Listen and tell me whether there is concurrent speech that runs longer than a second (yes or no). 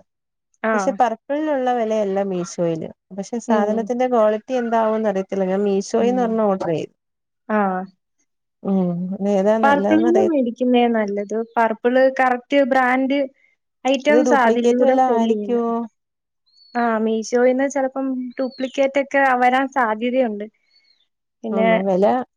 yes